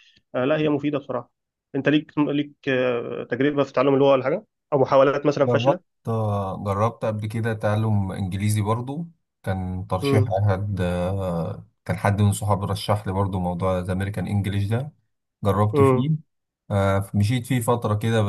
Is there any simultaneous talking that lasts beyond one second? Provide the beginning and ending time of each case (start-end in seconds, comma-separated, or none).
none